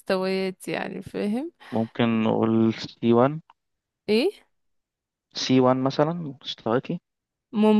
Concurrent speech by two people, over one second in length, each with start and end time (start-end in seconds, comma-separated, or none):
none